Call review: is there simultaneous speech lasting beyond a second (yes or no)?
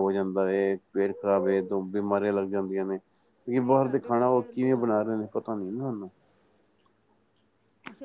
yes